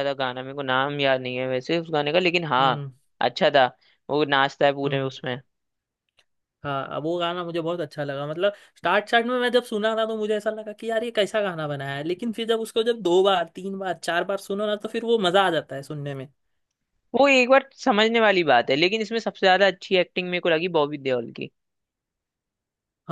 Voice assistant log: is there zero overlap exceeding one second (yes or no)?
yes